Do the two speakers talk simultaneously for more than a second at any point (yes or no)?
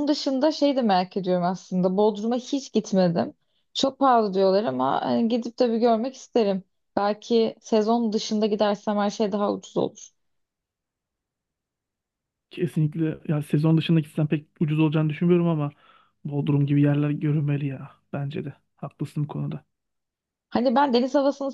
no